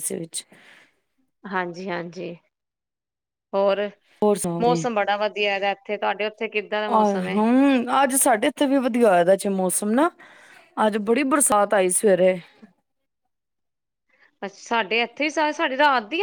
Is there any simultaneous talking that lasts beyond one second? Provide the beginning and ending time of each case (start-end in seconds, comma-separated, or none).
none